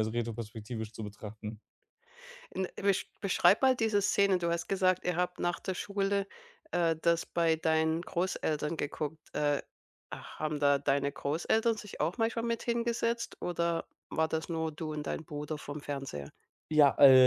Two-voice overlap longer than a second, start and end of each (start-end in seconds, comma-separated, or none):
none